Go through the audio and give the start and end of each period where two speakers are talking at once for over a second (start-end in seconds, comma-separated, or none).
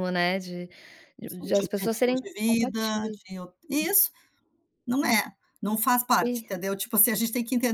1.3-3.2